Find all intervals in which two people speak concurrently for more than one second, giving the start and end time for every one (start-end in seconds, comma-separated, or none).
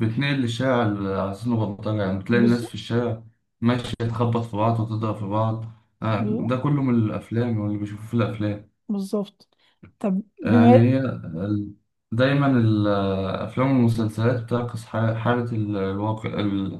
none